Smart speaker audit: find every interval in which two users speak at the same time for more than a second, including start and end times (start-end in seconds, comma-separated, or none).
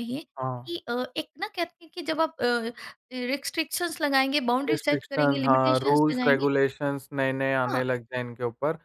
4.7-6.5